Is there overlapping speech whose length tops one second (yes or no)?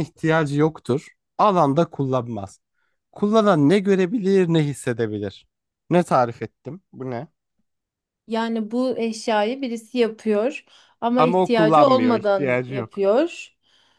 yes